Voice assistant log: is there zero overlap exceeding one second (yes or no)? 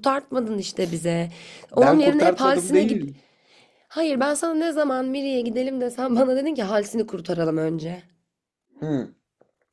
no